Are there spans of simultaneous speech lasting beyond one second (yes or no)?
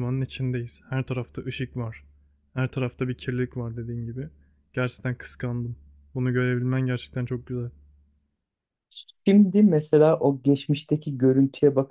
no